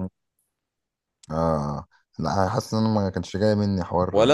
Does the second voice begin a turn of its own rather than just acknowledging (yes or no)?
yes